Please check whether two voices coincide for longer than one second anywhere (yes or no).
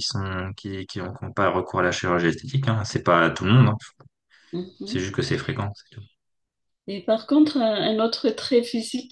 no